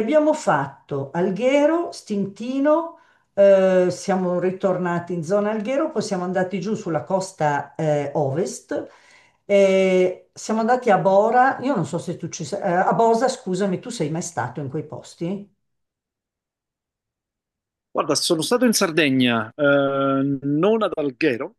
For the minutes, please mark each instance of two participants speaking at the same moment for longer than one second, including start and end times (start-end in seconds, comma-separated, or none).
none